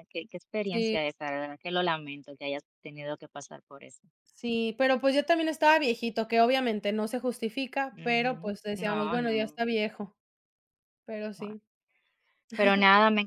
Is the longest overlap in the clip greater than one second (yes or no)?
yes